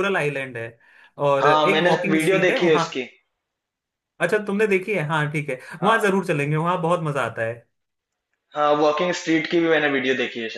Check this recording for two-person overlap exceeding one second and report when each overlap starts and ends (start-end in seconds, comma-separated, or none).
1.4-2.8